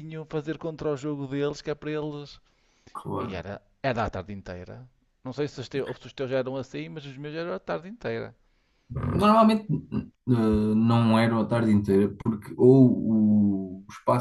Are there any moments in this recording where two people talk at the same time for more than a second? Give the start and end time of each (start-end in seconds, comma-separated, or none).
none